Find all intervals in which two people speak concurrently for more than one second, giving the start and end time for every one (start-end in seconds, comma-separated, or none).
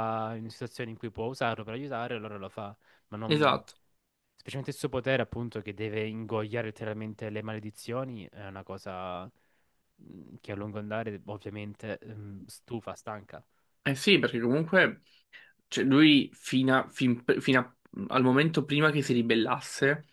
none